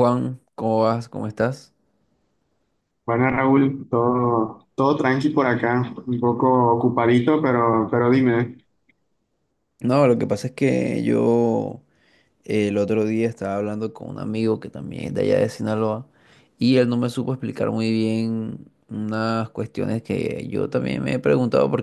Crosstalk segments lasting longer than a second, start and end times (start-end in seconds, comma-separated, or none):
none